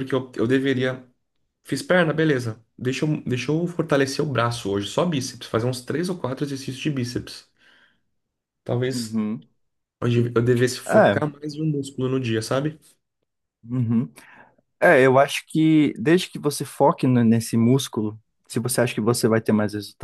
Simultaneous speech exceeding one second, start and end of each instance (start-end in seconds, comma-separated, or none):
none